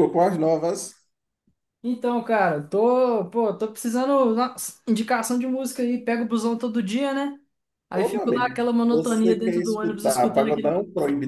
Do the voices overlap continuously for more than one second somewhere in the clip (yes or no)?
yes